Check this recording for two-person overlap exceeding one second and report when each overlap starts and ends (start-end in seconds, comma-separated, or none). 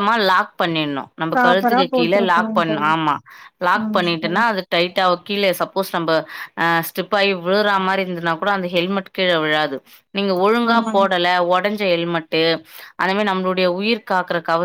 1.3-2.9